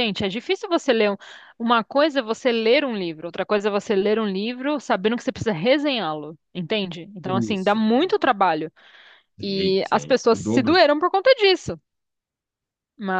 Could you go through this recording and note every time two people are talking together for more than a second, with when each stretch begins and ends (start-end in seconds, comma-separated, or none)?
9.4-10.8